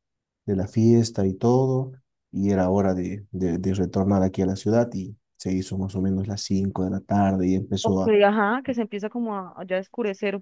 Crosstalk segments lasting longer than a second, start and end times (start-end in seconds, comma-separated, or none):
none